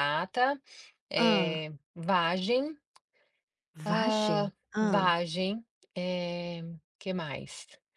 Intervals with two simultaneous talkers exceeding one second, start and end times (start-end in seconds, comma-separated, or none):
3.9-5.2